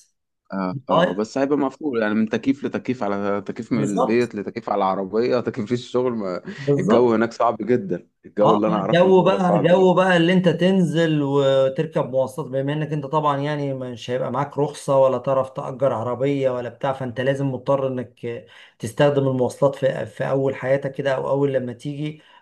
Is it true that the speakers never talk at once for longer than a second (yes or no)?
no